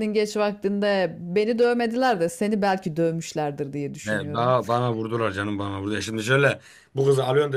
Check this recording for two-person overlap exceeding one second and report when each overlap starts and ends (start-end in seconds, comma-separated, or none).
none